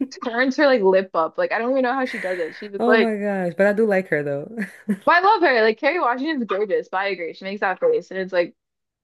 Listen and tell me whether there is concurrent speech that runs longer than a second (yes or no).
no